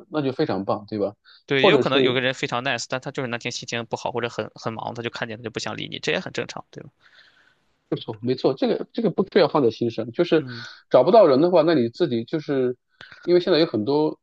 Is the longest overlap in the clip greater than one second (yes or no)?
no